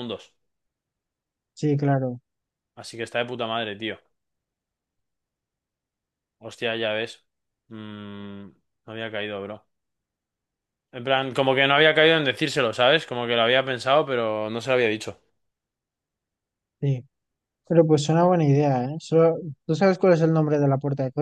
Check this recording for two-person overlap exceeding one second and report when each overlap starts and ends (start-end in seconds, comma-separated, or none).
none